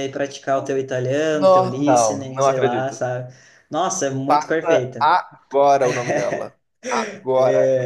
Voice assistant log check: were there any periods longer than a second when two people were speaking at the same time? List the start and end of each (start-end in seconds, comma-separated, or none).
1.3-3.1